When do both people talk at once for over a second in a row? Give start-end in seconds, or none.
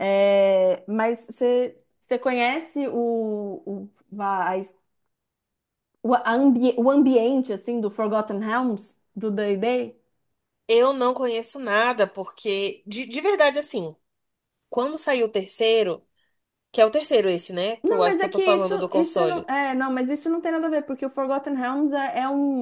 17.8-19.5